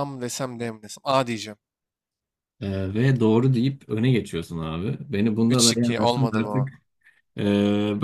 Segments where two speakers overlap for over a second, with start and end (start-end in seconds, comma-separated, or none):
5.5-6.7